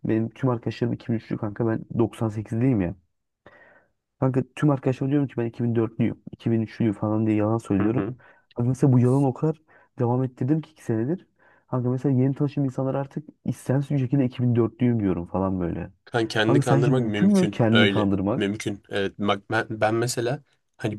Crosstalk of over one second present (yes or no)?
yes